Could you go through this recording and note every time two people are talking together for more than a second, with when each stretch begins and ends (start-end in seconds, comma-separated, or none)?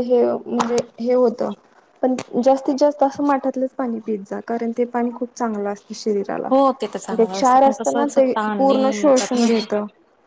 7.7-9.5